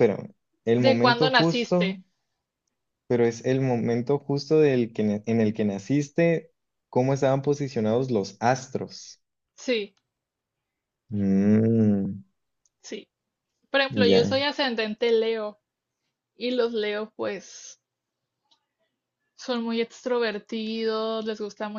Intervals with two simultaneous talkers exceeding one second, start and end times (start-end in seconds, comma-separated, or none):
0.8-2.0